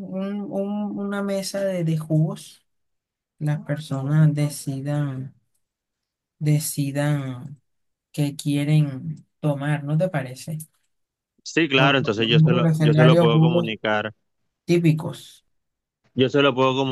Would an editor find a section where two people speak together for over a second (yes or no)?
yes